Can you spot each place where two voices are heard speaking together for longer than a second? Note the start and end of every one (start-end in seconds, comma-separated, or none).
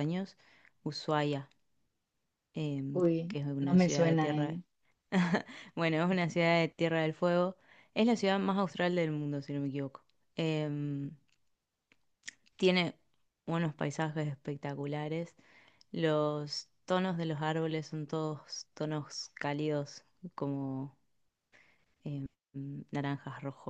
2.9-4.6